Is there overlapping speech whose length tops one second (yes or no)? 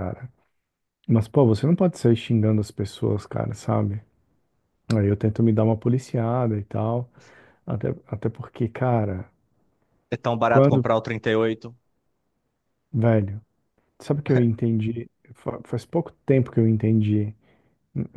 no